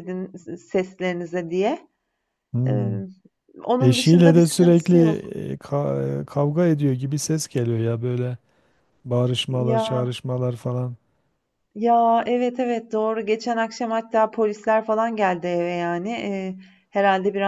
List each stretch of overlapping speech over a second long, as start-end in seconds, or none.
3.8-5.1